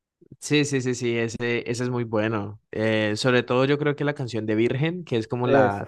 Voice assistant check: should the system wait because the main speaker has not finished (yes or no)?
yes